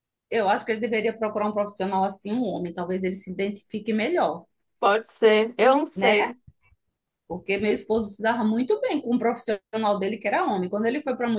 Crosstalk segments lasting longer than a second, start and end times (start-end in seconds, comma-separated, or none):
none